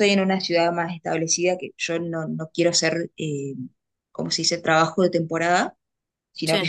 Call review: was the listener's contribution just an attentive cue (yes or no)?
yes